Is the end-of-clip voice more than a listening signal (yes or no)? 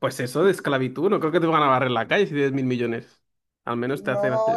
yes